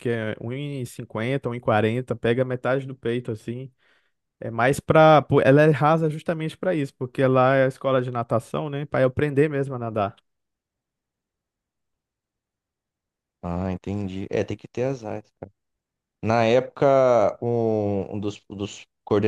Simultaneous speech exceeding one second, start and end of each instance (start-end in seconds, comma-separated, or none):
none